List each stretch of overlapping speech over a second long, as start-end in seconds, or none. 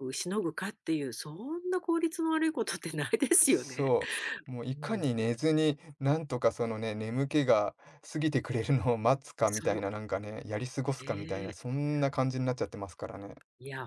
none